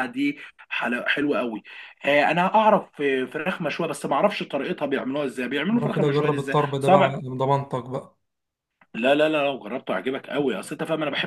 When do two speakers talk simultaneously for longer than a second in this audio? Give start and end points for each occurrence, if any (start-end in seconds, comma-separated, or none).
5.7-7.2